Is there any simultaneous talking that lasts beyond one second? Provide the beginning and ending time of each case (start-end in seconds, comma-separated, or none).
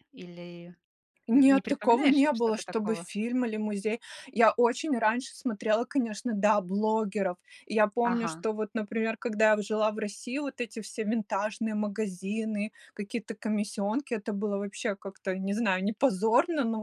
1.3-3.1